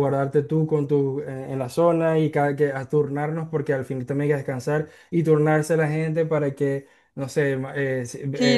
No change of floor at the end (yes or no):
no